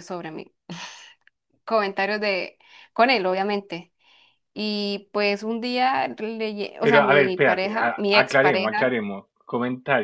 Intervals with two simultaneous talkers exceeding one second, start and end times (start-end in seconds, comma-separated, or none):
6.8-8.8